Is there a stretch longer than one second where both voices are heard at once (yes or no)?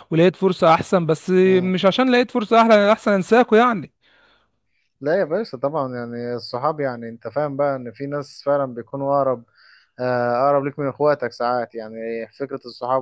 no